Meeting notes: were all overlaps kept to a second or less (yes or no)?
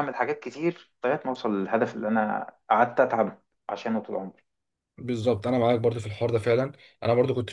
yes